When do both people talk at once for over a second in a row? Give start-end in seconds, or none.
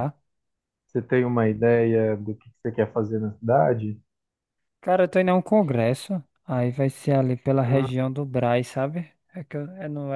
none